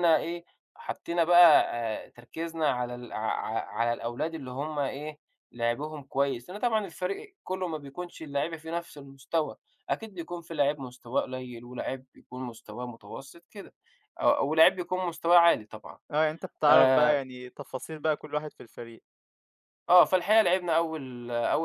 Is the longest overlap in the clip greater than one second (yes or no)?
no